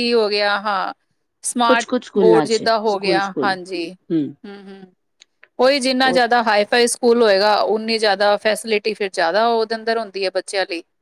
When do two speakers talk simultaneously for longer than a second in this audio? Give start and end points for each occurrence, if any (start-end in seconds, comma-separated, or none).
1.7-3.5